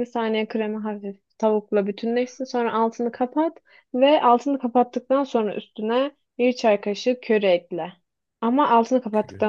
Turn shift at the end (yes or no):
no